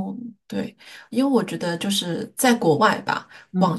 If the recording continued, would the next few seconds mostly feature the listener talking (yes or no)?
no